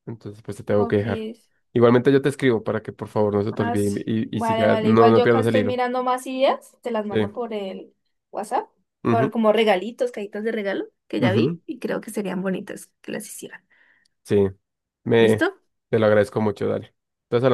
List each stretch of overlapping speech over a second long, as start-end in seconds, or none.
3.5-5.8